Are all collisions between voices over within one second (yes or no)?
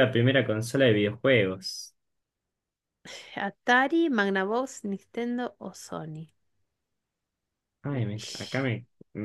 yes